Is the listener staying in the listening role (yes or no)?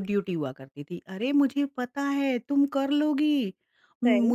yes